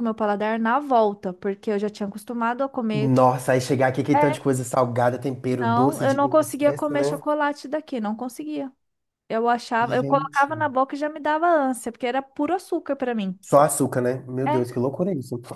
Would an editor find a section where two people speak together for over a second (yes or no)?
yes